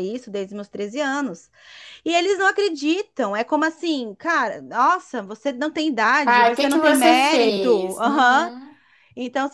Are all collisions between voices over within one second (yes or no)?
no